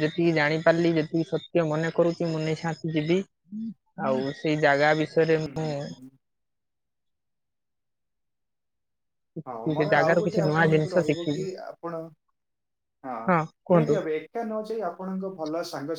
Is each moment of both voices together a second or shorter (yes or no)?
no